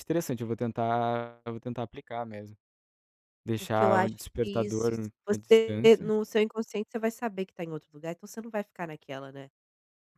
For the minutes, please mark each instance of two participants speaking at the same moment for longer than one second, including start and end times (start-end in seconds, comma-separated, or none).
3.6-6.1